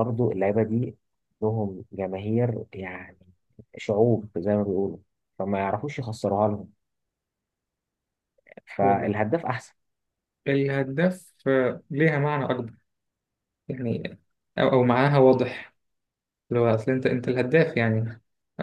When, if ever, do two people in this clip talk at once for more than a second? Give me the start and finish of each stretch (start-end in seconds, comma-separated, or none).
none